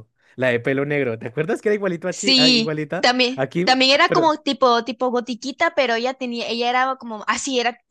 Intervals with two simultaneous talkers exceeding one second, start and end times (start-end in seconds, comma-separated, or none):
2.1-4.3